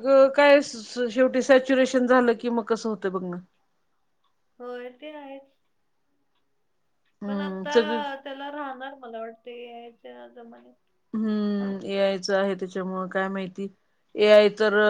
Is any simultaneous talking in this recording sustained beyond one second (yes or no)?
no